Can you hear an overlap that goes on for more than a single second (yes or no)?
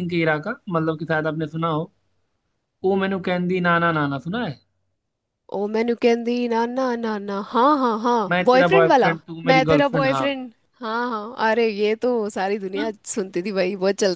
yes